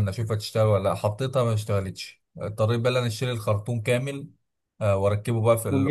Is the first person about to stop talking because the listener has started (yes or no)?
no